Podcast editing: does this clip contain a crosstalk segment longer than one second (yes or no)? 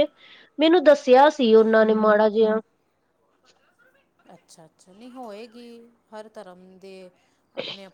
no